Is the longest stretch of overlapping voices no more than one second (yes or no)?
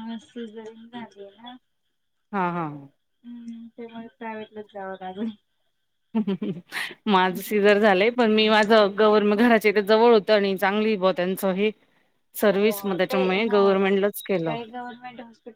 no